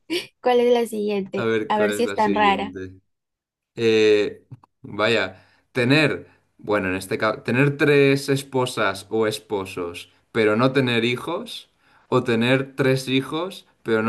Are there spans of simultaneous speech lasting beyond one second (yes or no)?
yes